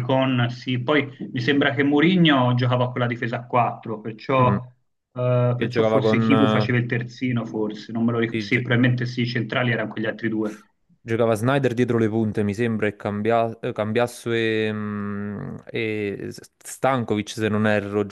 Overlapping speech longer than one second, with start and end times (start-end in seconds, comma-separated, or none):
5.5-6.7